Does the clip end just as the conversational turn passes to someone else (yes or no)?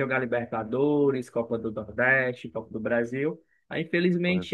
no